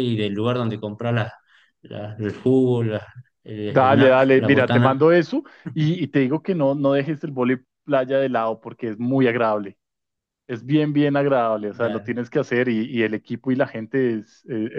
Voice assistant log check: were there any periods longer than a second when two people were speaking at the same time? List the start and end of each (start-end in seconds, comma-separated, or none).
3.7-5.1